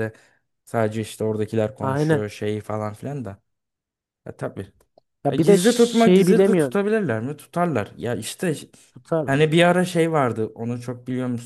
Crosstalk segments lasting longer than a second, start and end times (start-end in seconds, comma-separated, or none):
5.3-6.8